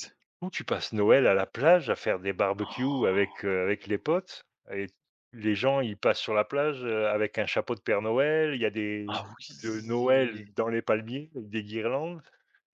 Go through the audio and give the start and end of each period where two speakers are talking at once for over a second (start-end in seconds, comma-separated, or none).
9.1-10.5